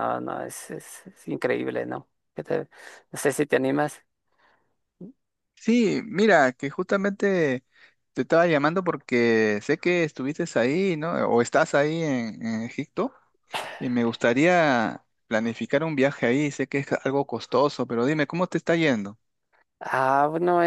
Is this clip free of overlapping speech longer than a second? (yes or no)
yes